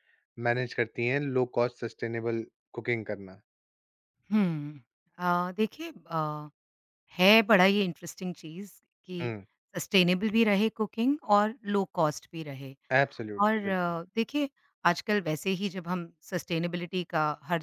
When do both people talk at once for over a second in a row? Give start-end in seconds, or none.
none